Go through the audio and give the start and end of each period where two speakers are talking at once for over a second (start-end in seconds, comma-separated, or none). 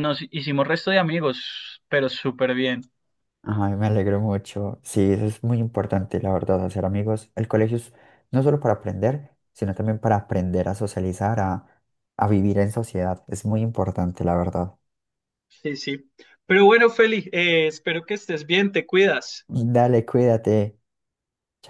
none